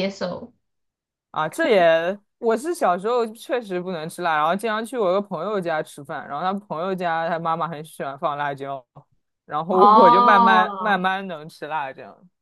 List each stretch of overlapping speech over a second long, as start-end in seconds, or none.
9.7-11.1